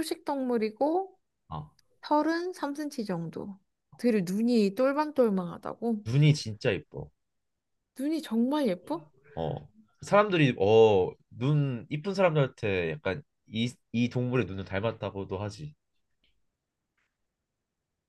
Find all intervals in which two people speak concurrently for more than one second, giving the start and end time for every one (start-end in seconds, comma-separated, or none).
none